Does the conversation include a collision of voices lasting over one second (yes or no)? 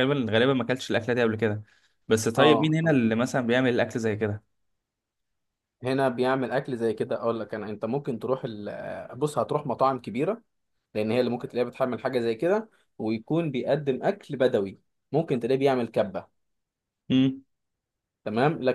no